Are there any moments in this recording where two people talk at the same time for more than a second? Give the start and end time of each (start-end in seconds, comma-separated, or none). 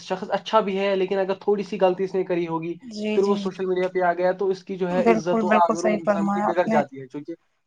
5.0-6.8